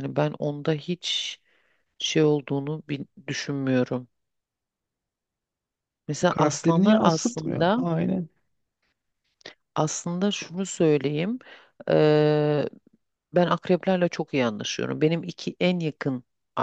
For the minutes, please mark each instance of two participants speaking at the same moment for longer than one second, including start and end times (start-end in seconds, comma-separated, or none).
6.3-7.9